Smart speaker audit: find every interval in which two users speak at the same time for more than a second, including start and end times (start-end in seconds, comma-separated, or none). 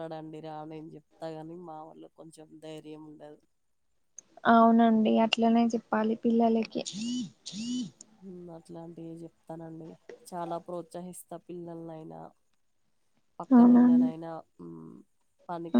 none